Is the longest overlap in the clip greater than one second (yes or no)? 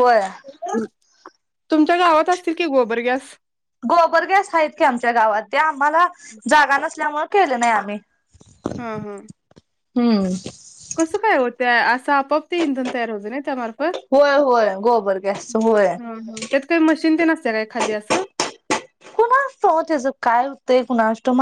no